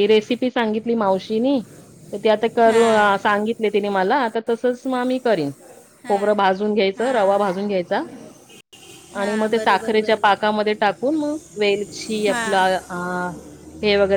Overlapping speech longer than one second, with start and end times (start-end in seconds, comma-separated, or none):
9.2-10.5